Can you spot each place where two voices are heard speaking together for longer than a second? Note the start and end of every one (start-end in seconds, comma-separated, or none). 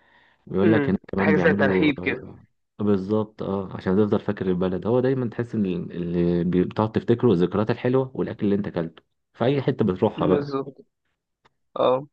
0.6-2.1